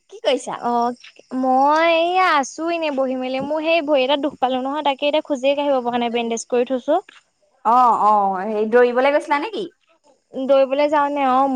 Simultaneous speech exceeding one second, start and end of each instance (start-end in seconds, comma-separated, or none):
none